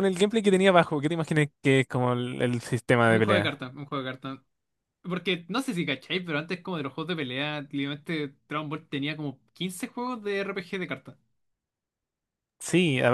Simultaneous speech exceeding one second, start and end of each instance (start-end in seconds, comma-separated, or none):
none